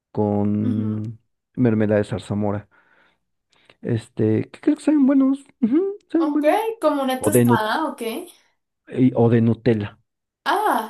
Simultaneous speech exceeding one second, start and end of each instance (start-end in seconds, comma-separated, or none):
none